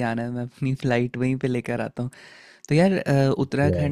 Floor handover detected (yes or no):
no